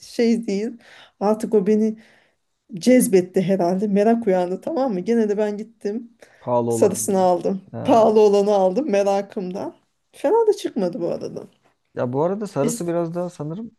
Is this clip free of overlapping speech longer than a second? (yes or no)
yes